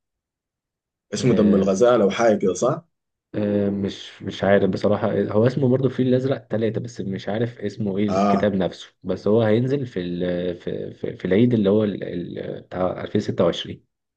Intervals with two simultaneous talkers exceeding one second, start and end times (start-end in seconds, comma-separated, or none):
none